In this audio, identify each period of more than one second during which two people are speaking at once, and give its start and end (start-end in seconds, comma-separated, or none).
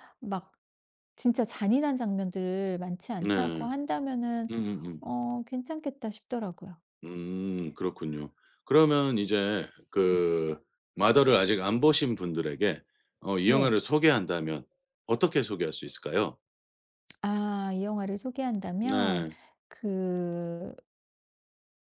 none